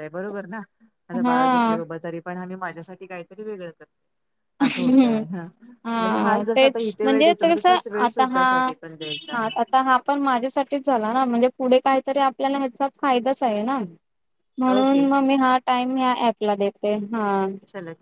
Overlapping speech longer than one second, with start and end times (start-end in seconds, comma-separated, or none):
6.0-8.4